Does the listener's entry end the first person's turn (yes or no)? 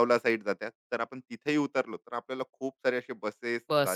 yes